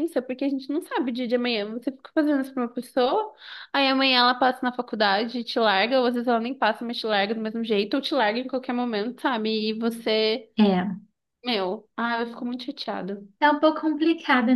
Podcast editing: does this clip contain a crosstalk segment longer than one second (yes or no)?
no